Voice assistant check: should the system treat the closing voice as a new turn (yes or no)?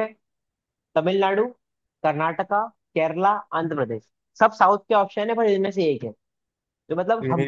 no